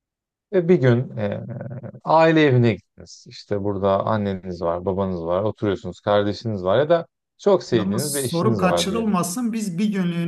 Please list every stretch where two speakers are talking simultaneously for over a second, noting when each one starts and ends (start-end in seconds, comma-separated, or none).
7.7-9.1